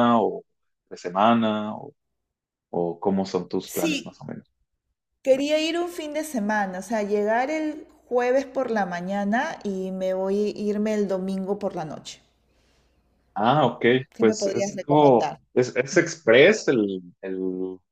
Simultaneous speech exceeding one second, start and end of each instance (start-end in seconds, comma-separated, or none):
14.1-15.4